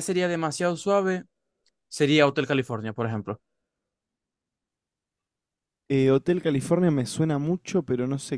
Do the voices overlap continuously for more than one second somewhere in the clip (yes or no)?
no